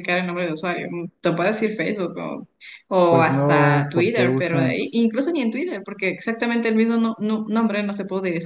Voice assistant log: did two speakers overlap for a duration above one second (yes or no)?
yes